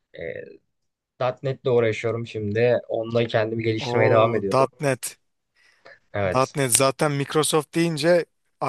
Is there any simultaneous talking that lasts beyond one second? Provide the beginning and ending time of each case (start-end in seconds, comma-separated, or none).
none